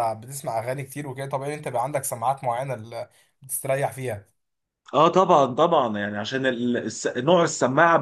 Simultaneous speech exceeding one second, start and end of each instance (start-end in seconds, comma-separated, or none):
none